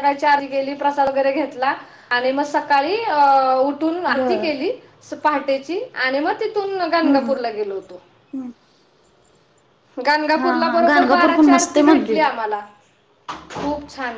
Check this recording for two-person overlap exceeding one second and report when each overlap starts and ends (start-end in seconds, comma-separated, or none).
10.6-12.3